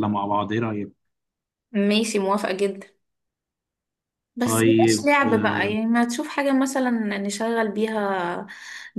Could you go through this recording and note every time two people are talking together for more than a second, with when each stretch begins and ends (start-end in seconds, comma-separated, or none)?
4.4-5.7